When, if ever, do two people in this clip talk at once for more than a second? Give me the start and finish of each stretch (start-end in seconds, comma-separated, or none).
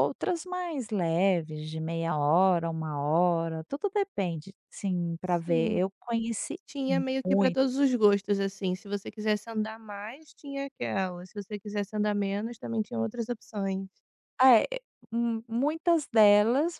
none